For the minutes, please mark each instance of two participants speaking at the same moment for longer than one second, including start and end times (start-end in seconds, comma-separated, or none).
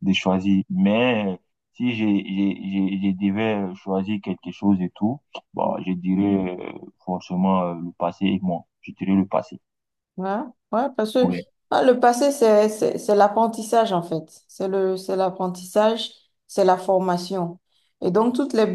none